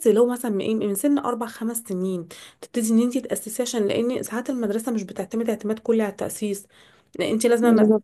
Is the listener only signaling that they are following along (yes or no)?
yes